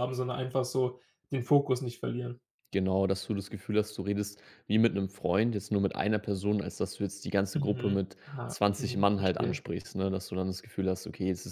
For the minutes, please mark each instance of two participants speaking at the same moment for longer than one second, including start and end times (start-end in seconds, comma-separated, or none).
7.5-9.6